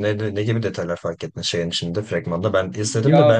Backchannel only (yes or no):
yes